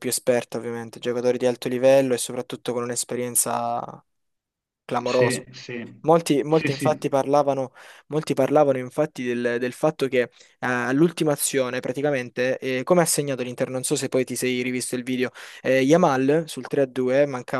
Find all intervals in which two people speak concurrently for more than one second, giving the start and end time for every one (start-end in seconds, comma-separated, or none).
none